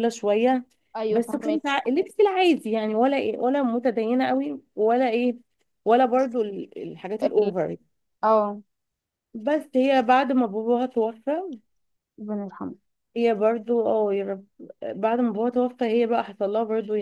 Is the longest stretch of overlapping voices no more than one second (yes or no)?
yes